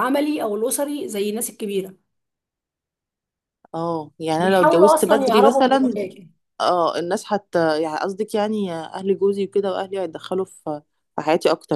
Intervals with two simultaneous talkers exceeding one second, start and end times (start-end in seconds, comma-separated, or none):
4.4-5.9